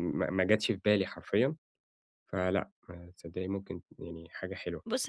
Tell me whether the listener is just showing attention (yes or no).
no